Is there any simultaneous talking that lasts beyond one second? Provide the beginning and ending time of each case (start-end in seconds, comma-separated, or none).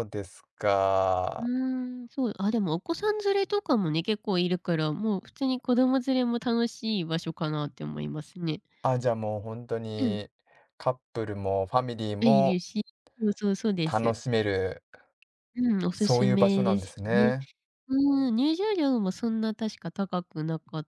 15.9-17.3